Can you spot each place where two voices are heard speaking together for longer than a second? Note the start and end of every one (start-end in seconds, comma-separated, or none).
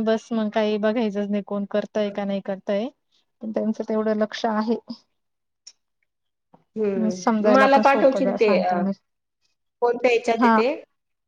7.2-8.7